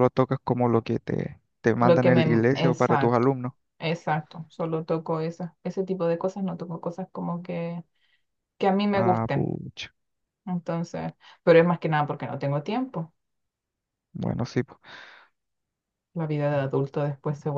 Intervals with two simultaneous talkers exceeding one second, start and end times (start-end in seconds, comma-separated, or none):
1.8-3.3